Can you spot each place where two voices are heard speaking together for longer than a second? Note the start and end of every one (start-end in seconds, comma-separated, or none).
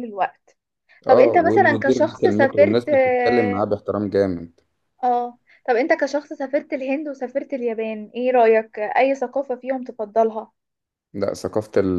1.1-3.6